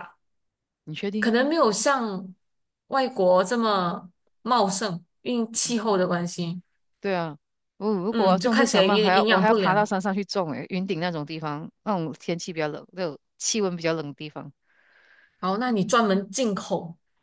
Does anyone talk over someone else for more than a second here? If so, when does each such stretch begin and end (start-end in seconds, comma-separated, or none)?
8.1-9.9